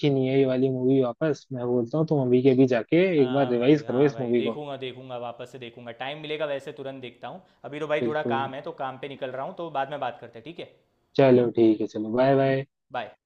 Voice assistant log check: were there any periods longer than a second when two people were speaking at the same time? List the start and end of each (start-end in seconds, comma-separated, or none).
3.2-4.6